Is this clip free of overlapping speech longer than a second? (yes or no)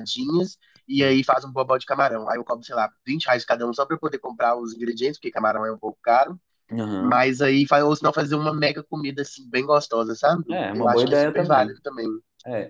no